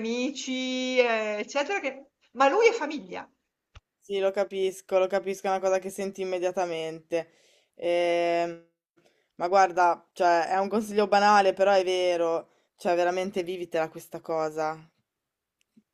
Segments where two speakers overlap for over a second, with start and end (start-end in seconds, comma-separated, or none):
none